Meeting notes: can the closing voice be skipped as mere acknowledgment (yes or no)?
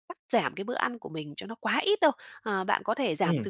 yes